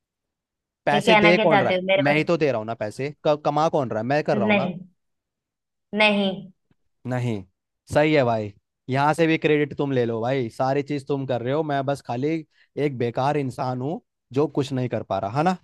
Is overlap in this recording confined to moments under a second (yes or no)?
no